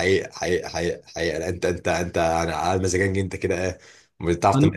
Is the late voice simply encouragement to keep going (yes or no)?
yes